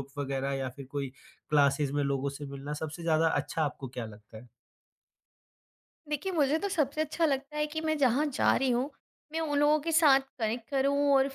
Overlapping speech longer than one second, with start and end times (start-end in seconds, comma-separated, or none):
none